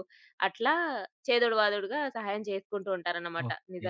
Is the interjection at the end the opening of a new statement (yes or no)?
yes